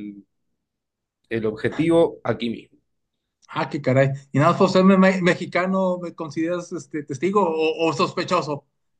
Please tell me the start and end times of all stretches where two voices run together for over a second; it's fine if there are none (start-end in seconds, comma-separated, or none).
none